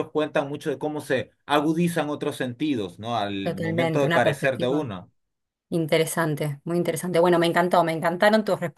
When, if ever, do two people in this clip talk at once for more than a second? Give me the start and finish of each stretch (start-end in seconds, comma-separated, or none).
3.4-4.9